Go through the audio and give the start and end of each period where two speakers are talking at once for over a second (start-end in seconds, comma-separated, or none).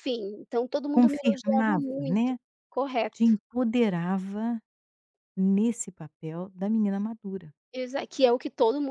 0.9-2.3